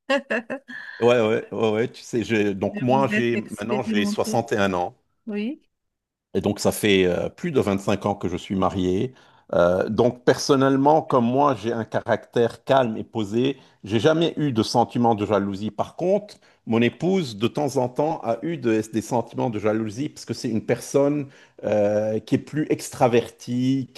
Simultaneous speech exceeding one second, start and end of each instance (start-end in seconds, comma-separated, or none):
2.7-4.4